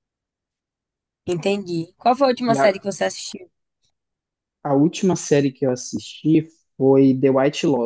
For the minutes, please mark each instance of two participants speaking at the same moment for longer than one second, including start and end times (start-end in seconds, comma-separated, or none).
none